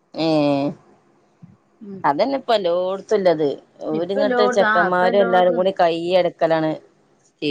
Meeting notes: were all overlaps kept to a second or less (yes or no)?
no